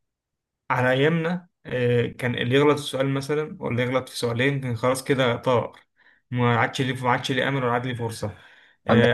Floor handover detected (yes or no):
no